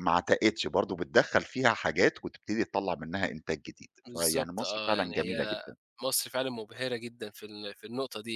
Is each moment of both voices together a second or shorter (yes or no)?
no